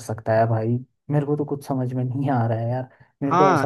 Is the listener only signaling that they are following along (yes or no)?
no